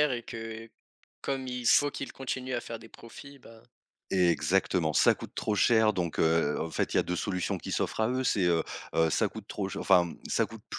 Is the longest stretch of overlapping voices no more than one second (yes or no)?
yes